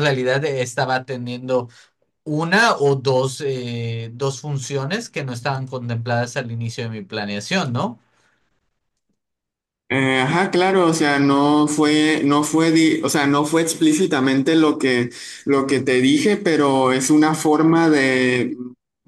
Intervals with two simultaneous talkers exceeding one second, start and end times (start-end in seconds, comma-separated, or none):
none